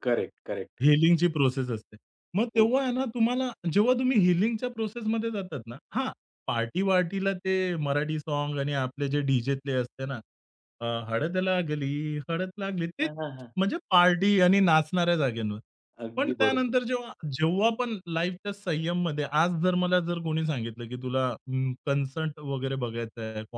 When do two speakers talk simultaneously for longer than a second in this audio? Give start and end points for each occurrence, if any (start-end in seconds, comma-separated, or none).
none